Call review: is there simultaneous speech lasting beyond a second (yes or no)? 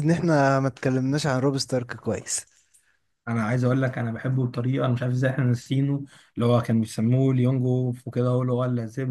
no